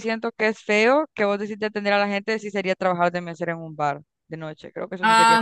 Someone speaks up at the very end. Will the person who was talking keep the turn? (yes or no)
no